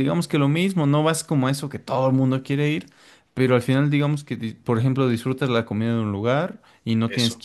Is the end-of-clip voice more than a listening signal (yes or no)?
no